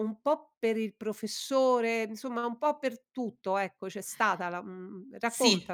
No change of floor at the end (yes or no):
no